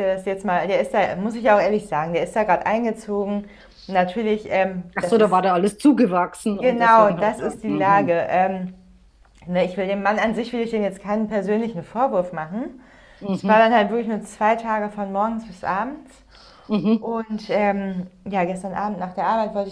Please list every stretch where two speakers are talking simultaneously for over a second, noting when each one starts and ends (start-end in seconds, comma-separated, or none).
6.5-8.1